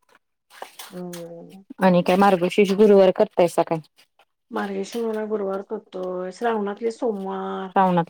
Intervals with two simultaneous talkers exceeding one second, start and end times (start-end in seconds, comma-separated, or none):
none